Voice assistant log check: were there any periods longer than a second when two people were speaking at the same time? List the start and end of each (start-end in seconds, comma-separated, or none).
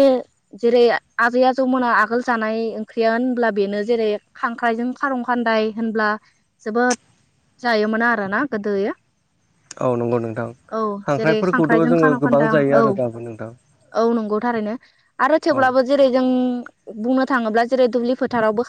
11.2-13.5